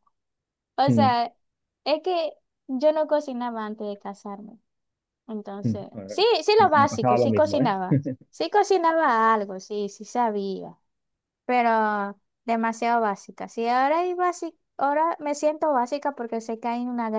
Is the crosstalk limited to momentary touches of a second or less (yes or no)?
no